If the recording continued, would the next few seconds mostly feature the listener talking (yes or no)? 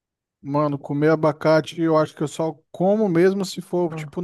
no